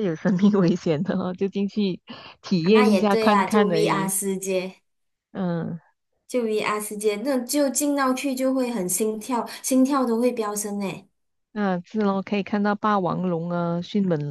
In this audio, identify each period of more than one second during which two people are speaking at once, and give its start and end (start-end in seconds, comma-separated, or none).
2.6-4.1